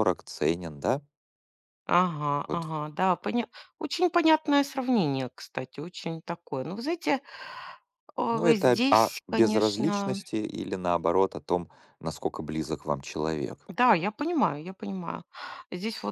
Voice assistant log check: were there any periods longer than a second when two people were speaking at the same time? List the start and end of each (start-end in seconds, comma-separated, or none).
8.3-10.2